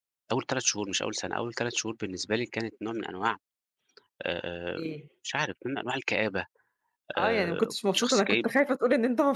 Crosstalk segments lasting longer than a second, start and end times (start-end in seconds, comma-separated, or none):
7.2-8.5